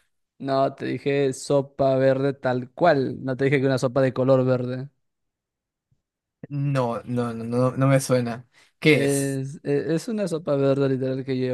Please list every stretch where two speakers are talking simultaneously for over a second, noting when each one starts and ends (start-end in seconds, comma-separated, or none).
none